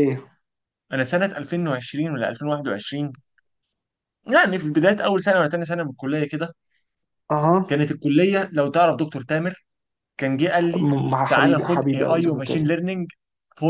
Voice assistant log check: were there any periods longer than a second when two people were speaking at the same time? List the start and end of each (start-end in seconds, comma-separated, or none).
10.7-12.7